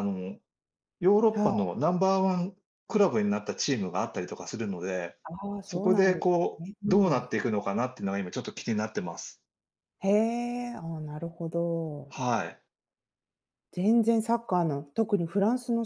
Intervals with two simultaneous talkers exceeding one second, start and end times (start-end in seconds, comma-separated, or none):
5.6-7.3